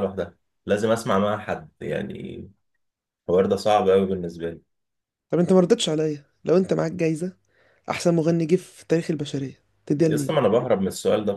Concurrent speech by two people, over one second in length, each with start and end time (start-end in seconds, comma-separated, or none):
none